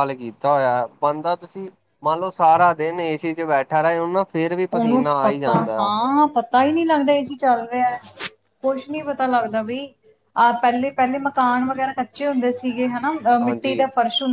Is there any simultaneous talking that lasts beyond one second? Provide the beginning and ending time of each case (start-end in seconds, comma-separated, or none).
none